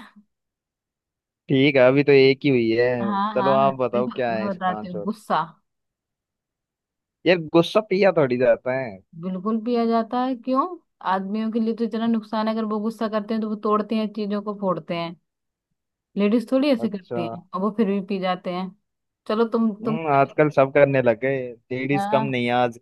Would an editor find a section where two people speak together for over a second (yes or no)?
yes